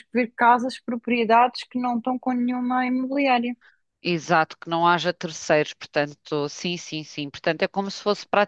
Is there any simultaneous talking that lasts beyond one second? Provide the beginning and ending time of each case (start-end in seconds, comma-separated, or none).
none